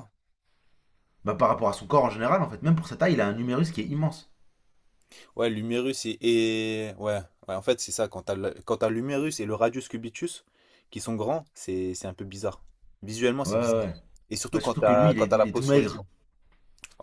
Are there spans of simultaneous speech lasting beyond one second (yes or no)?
yes